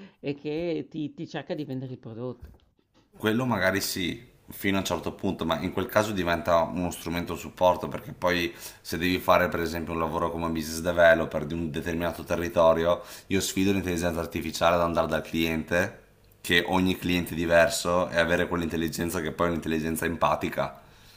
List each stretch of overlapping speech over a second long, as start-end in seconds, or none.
none